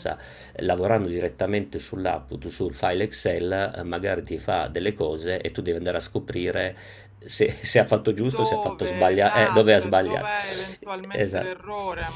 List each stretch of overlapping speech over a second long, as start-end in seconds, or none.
8.3-10.3